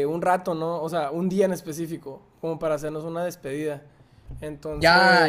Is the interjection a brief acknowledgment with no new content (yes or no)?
no